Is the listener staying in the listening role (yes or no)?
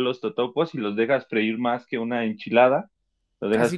no